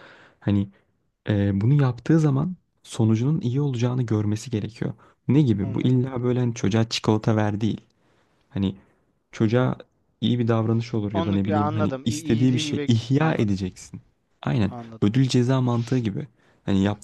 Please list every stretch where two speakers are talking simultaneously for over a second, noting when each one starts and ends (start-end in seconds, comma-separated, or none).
11.1-13.6